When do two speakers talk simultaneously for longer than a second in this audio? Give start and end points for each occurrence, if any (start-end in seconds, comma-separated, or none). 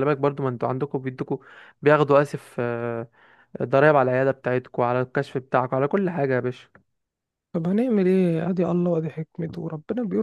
none